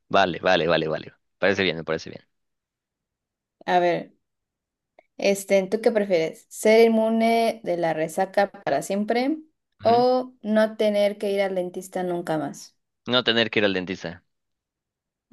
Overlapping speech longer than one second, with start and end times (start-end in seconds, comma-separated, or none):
none